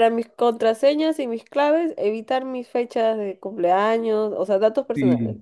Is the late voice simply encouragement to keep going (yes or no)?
no